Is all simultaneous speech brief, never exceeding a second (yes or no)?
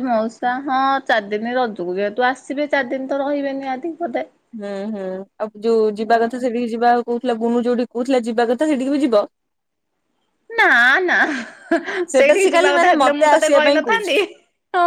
no